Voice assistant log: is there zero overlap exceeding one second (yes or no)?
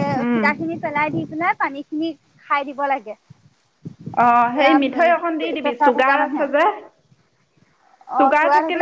no